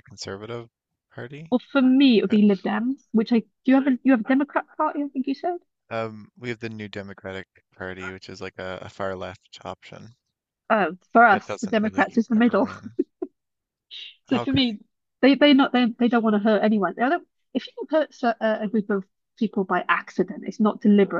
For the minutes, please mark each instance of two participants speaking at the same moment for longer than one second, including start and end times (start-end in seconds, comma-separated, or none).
11.3-12.7